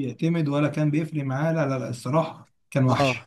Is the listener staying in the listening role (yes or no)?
no